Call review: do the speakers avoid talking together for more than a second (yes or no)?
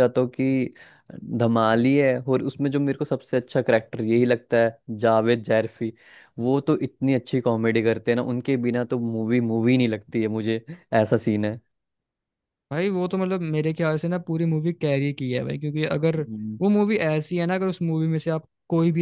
yes